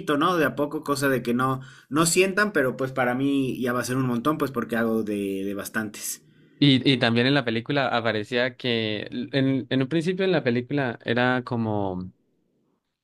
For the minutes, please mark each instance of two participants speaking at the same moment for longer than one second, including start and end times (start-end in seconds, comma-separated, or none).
none